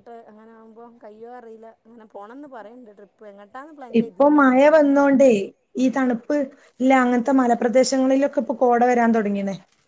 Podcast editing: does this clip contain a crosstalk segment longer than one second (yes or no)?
no